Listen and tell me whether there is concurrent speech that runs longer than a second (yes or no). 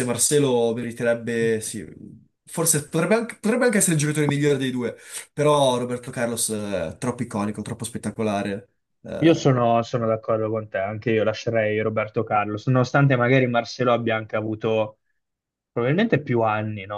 no